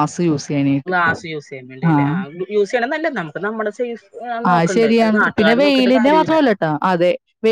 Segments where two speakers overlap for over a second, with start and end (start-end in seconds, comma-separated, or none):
4.5-6.4